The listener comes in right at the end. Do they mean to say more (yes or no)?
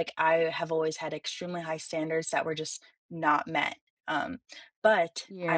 yes